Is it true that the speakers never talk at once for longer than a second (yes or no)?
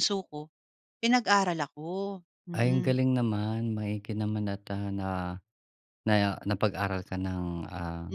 yes